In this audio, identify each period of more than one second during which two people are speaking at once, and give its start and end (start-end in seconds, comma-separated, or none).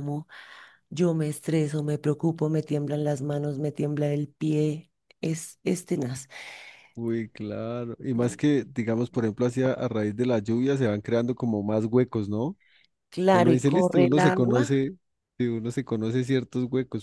13.3-14.8